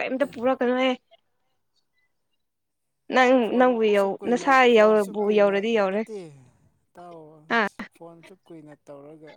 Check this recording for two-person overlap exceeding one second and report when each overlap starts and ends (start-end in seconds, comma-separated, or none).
3.5-6.0